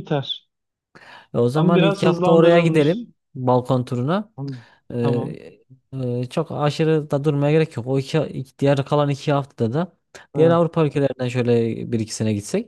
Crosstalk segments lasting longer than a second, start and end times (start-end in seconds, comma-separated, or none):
1.5-3.0